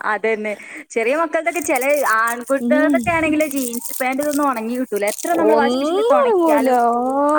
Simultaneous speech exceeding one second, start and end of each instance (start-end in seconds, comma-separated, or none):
5.5-6.8